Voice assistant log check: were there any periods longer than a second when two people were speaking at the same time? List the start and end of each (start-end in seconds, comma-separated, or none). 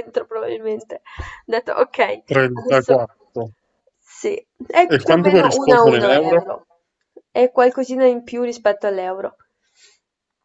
4.9-6.4